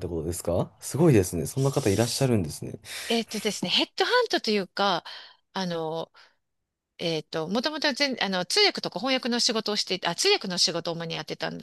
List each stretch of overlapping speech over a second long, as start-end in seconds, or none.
none